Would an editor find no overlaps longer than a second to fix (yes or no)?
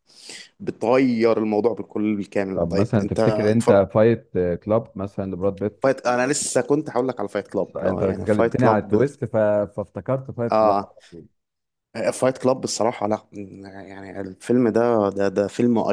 no